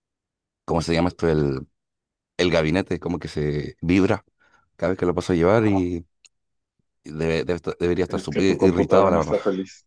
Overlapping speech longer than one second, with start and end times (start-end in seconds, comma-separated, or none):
8.1-9.3